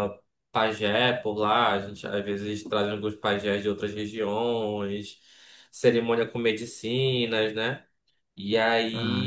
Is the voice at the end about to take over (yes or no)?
no